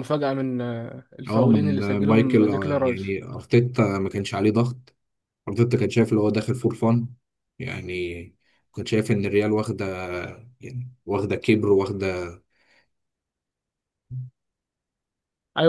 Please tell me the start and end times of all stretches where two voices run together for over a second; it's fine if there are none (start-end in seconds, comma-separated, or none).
1.3-3.1